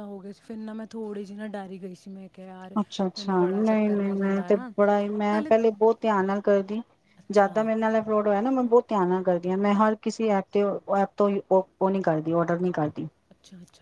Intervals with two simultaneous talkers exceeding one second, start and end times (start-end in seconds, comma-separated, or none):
3.2-4.7